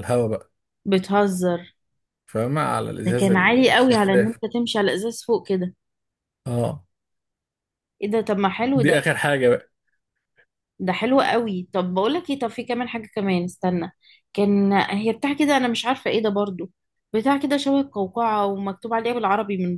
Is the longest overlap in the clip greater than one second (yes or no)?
yes